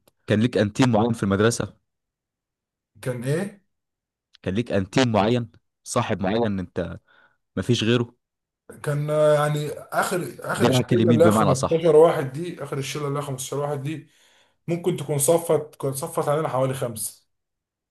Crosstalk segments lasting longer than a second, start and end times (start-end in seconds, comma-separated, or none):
10.5-11.9